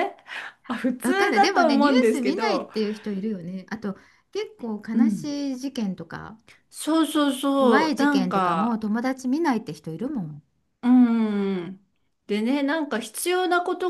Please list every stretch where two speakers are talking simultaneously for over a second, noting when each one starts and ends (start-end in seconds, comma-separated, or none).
1.0-2.7, 7.5-8.8